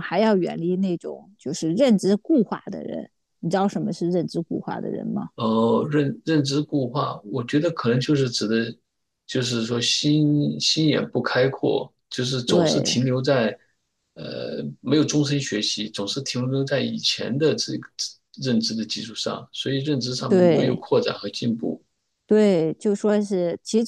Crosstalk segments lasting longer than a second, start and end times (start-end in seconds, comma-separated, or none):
none